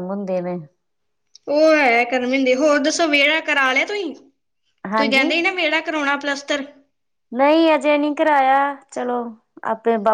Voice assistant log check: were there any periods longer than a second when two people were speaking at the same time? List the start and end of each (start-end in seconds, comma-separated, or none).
none